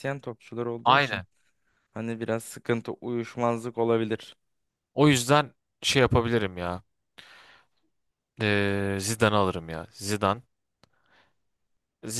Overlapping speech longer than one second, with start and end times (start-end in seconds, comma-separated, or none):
none